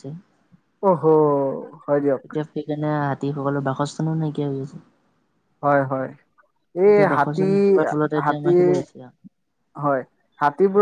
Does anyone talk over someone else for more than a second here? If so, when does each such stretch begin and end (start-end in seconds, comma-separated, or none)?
6.9-8.6